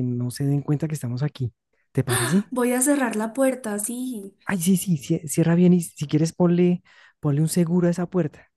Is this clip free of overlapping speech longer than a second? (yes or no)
yes